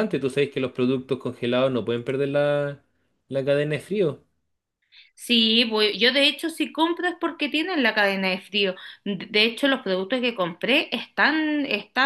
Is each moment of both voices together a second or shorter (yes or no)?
yes